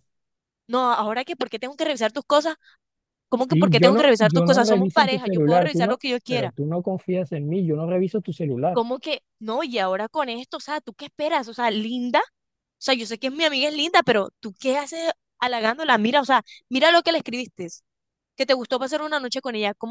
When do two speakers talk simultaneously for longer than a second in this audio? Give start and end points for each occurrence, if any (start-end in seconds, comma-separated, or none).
3.4-6.5